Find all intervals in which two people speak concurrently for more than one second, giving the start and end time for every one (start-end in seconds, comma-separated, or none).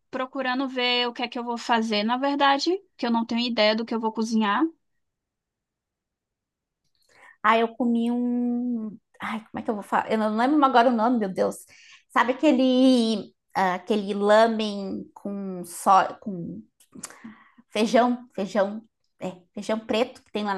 none